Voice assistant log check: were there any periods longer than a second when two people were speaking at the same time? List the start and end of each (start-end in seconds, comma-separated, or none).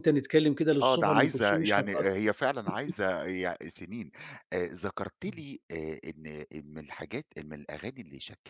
0.8-2.0